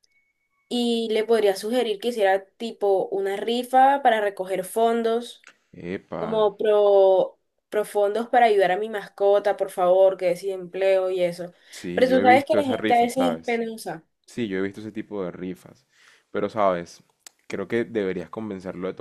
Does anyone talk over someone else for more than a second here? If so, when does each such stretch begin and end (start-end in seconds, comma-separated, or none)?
11.9-13.6